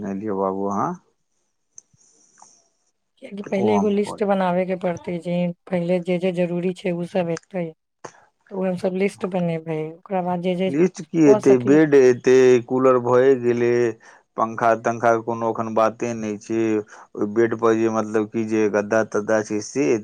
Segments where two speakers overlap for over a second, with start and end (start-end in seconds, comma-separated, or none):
none